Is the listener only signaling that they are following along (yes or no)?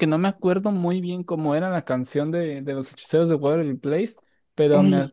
yes